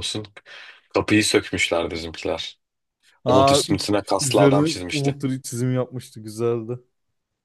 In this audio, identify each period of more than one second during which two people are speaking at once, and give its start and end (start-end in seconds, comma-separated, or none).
3.3-5.2